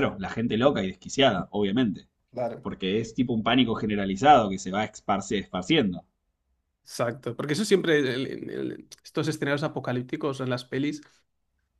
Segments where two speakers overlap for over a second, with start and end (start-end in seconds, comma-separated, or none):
none